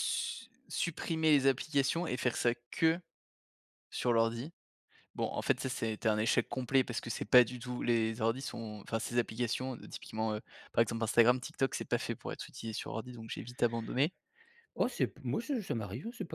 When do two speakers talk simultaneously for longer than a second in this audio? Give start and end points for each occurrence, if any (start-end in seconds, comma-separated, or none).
none